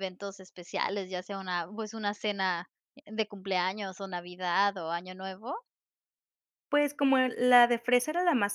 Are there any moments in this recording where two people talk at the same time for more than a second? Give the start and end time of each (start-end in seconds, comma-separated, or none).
none